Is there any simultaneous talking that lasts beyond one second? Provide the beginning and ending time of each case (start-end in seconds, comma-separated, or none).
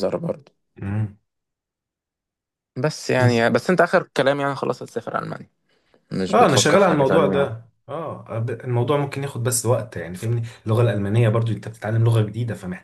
6.3-7.5